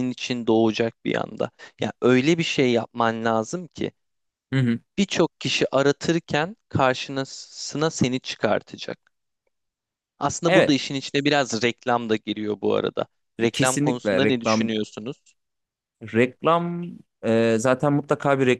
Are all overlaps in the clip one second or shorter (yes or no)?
no